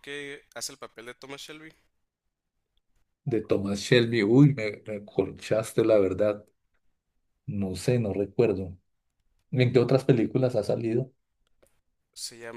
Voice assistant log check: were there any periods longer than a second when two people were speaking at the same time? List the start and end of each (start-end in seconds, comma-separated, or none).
none